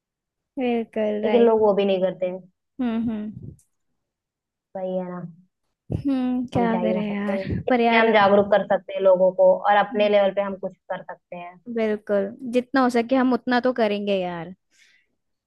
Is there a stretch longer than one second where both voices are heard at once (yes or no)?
yes